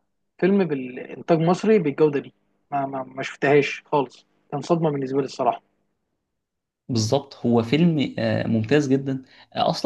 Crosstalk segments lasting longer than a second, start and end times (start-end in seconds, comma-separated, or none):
none